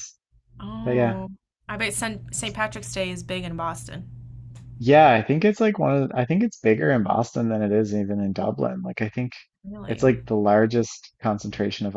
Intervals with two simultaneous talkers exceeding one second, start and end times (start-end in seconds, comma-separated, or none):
none